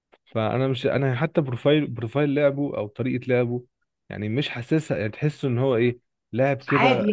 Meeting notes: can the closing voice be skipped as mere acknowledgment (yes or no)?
yes